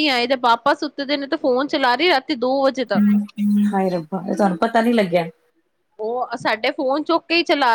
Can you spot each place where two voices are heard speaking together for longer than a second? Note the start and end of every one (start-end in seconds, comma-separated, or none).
none